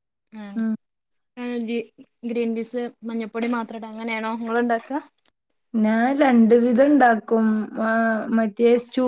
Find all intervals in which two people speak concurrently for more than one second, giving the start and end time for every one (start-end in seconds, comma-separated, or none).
none